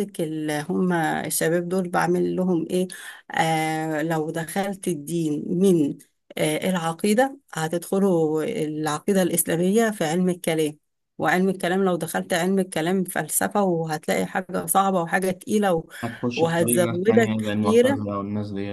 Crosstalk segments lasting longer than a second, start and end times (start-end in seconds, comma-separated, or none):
16.4-18.1